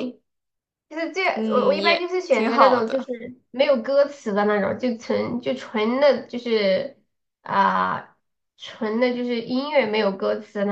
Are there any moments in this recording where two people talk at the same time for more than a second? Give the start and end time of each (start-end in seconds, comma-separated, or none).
1.3-3.1